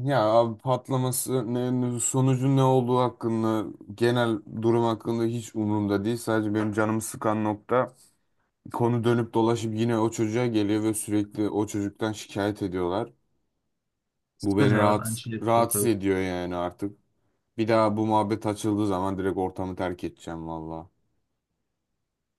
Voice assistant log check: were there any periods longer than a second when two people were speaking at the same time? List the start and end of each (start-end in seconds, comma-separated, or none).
14.4-15.9